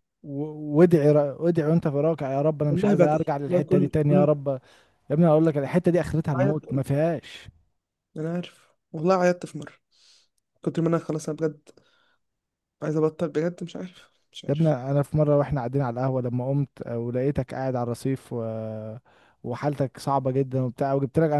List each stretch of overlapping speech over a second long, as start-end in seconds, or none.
2.7-4.3